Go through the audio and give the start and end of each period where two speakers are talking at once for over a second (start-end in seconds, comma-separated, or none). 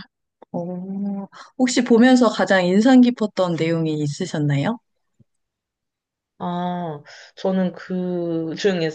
none